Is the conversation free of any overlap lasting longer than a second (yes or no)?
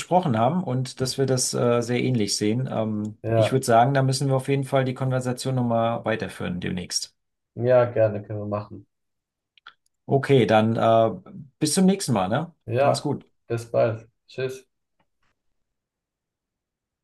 yes